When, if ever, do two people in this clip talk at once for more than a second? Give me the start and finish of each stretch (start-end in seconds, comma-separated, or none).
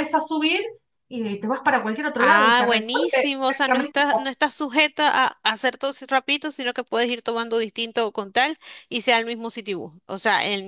2.2-4.1